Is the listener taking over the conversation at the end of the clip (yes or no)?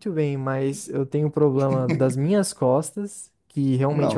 no